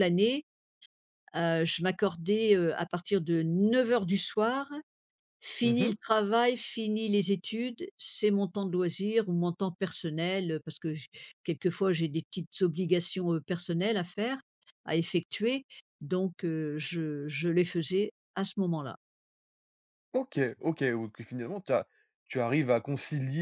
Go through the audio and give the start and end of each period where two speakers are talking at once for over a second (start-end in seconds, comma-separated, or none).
none